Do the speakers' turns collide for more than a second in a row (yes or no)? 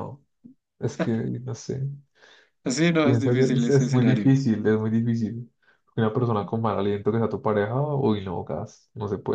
yes